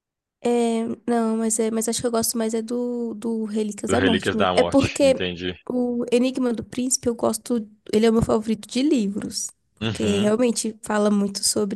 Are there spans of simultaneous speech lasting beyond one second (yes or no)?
yes